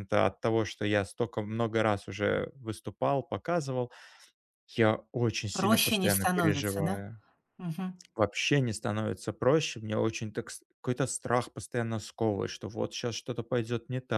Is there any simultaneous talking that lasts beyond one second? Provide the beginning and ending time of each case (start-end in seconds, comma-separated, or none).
5.5-7.0